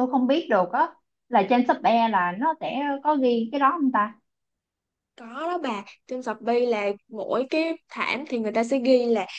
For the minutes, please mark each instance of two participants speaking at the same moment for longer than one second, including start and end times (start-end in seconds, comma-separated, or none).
none